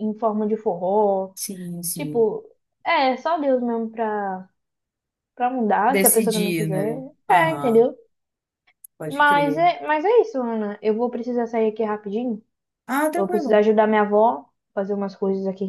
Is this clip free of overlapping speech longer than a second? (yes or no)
no